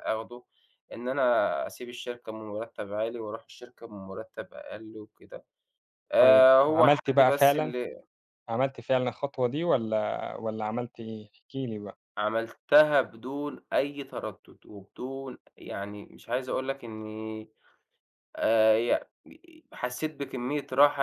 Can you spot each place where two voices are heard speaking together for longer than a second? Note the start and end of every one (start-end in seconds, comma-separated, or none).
6.2-7.7